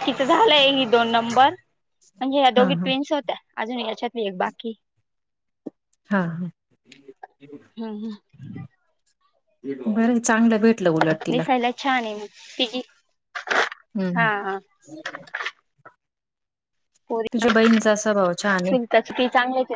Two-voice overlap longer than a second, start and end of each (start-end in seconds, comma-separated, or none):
17.3-18.8